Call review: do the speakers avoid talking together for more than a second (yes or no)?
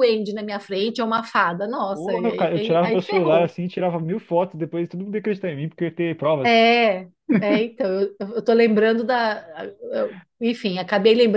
no